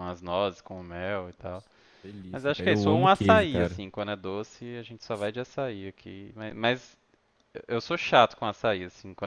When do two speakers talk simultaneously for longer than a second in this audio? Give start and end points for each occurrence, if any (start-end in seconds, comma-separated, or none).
2.3-3.8